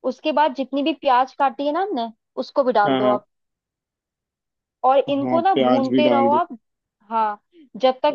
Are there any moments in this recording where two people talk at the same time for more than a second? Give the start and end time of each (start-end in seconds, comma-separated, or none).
5.1-6.4